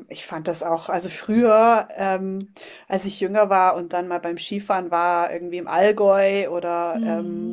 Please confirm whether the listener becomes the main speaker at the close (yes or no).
no